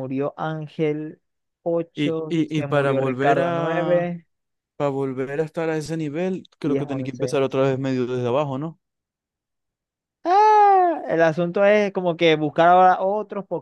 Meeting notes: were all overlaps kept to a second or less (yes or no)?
no